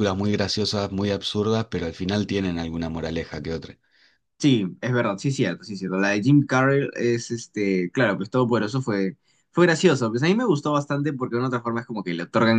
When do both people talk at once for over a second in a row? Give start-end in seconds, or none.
none